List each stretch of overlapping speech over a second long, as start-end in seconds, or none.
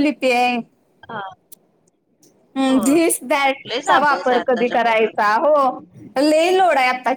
3.7-5.3